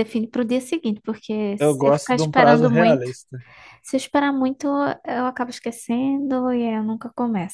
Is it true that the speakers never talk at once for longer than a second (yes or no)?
no